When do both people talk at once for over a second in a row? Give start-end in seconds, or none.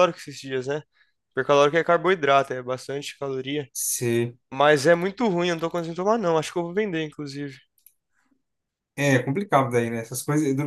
none